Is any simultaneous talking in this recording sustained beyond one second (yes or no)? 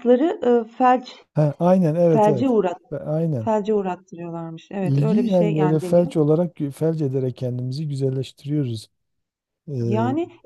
yes